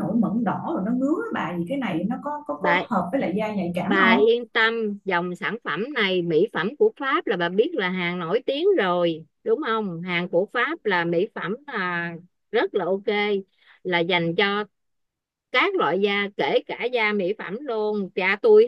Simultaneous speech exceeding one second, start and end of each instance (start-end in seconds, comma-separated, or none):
none